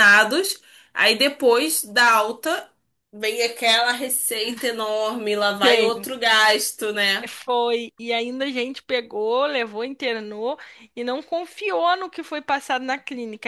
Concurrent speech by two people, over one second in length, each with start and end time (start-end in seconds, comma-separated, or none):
none